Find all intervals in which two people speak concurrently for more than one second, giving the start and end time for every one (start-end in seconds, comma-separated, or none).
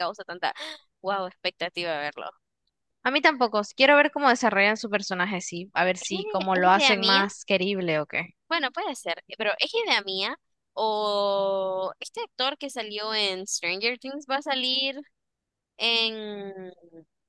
6.0-7.2